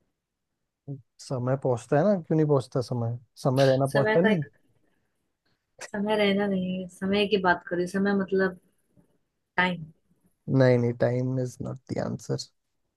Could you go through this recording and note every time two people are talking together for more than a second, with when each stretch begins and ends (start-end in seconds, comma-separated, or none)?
none